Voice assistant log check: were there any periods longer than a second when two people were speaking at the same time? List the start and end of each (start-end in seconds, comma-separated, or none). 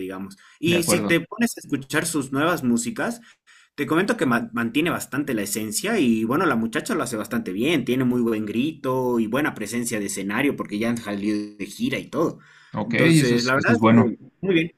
12.8-14.1